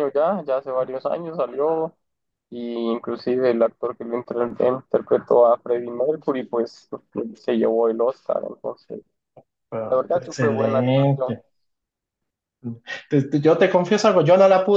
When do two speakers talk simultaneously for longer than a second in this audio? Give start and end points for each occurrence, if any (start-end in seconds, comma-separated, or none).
9.8-11.3